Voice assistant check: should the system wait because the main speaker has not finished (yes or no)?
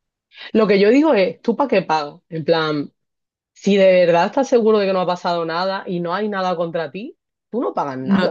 no